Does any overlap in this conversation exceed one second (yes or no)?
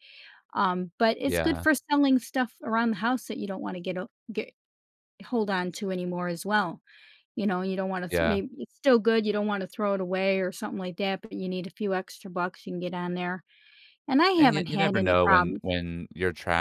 yes